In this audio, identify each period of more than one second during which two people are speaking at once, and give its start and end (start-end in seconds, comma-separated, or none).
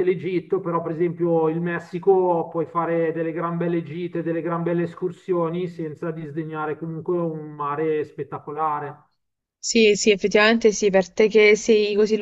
none